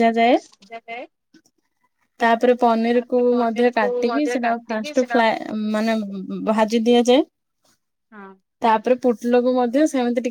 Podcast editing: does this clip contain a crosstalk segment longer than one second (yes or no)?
yes